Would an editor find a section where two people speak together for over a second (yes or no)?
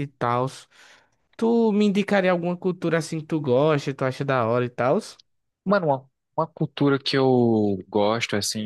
no